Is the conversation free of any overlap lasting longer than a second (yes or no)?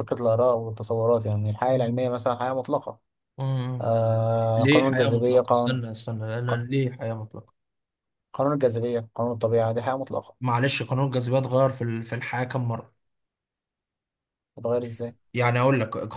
no